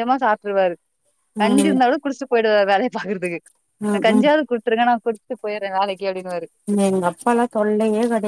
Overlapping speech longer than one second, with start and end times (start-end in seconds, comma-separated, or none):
none